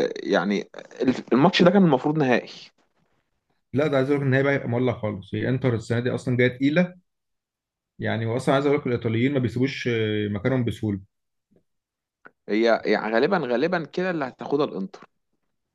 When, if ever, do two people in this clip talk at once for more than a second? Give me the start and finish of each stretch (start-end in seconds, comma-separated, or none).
none